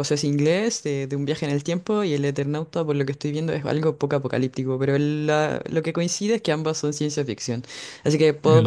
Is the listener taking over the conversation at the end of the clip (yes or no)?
no